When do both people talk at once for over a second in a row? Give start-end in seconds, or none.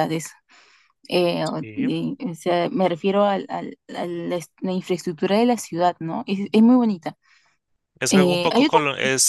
none